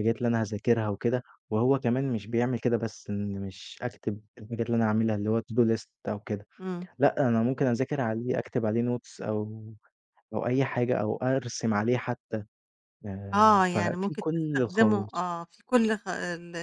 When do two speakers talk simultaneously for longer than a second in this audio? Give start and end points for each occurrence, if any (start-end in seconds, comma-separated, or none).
13.3-15.3